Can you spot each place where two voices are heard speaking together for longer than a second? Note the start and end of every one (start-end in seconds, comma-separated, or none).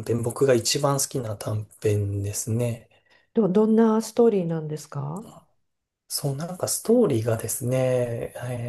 none